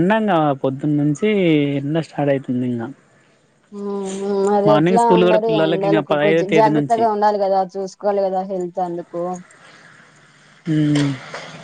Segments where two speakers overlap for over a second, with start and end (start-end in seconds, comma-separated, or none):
4.7-7.0